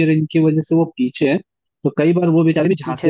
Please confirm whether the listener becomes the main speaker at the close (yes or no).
no